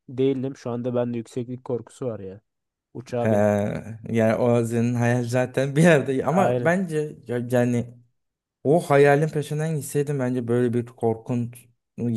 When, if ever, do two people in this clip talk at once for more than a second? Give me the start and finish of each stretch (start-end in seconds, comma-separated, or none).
none